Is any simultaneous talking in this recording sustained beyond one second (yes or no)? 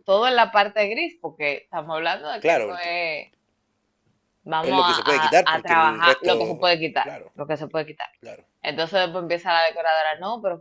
yes